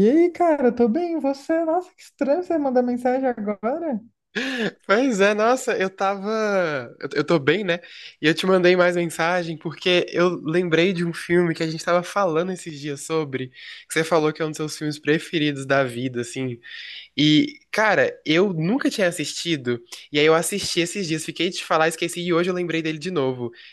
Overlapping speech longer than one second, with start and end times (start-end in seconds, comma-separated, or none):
none